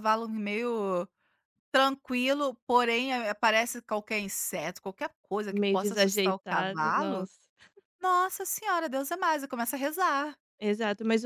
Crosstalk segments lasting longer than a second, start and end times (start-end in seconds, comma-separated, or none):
5.5-7.3